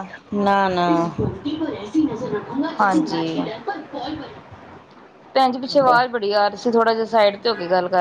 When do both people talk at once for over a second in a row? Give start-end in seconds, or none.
none